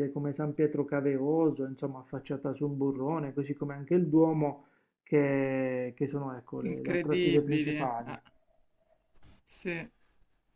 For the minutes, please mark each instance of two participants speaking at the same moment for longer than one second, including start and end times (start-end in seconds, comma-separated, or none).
6.6-8.2